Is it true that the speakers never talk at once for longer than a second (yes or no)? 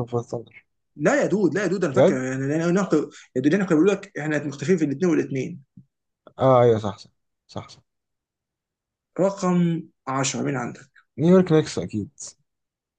yes